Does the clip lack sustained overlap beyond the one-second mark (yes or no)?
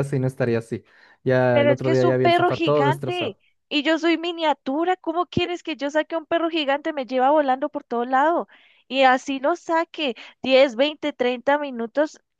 no